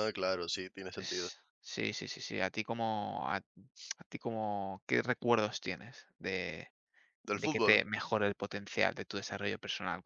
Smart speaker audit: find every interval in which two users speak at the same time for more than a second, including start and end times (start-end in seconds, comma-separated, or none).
none